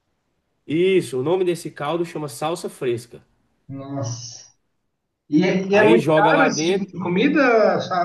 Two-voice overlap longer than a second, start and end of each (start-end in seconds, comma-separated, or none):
5.7-6.9